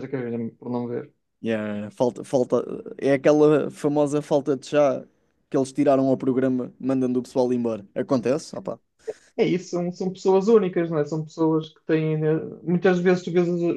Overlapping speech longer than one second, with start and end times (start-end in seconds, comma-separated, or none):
none